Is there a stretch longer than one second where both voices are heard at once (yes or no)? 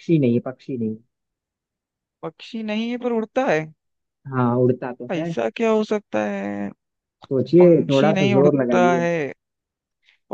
yes